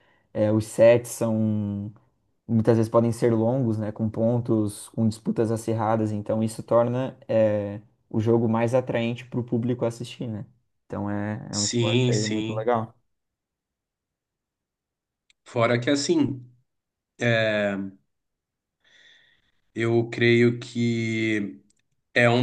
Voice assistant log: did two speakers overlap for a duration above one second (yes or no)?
yes